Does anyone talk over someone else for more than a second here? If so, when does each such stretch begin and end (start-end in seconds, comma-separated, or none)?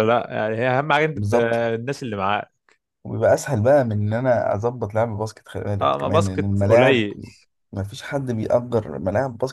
5.8-7.0